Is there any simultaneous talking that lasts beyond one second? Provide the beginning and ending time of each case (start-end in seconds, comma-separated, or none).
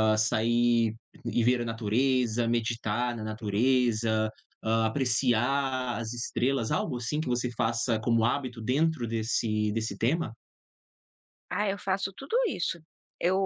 none